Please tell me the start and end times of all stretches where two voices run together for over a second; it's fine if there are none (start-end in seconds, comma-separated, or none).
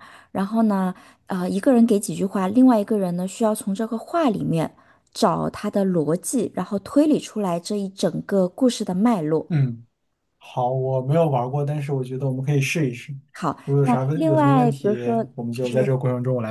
13.8-15.9